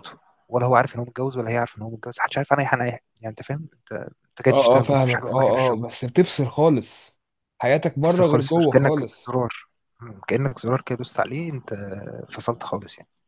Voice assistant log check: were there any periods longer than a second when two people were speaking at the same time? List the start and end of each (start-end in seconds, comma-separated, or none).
4.5-5.8, 8.0-9.3